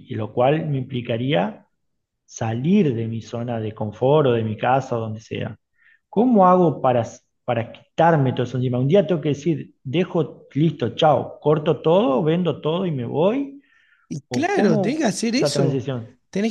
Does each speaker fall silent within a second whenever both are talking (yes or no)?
no